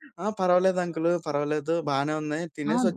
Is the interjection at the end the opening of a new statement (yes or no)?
no